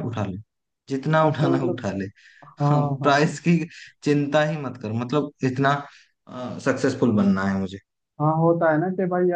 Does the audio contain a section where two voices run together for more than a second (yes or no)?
no